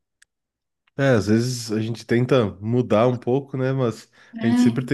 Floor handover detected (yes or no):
no